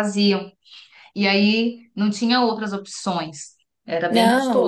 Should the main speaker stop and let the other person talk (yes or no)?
yes